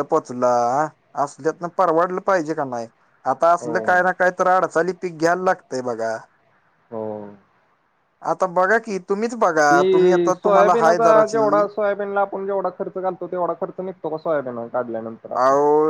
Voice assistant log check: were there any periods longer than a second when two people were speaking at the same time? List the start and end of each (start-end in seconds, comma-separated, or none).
9.7-11.7